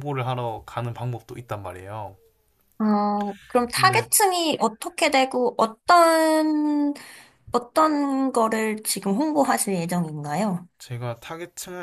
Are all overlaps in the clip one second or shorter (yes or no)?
yes